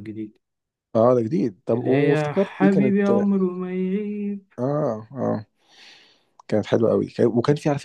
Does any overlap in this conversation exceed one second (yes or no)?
yes